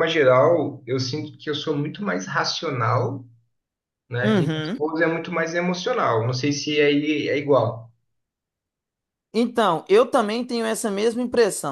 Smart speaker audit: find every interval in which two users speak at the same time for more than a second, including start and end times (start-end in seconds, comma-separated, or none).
none